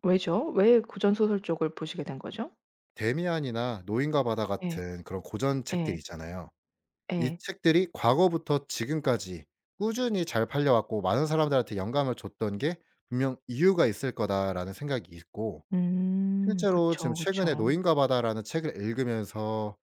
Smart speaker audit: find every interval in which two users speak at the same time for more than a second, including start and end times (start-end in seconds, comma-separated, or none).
16.4-17.8